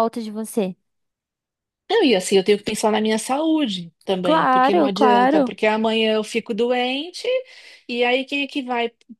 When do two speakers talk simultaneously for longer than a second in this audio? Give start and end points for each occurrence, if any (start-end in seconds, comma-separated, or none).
4.2-5.5